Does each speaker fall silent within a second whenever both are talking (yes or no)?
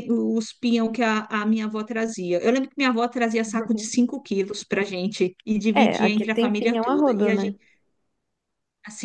no